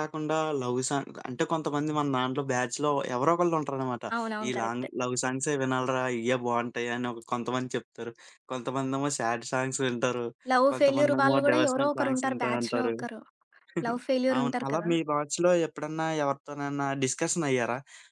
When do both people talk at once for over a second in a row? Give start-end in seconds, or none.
10.7-12.9